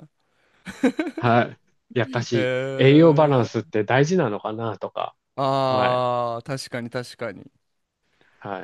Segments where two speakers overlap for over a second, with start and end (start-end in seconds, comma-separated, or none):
2.3-3.7